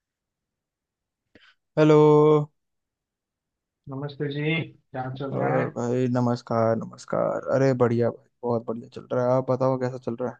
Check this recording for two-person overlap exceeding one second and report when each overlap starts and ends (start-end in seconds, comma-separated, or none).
none